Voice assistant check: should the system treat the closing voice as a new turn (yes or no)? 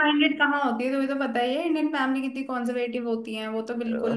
yes